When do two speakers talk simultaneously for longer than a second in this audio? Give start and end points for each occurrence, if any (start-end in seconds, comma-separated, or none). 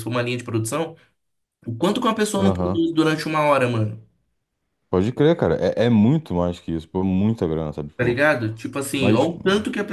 none